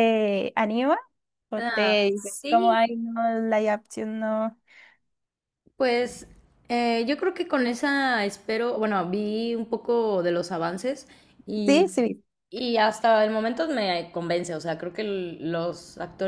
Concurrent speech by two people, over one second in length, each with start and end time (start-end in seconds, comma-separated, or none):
1.6-2.9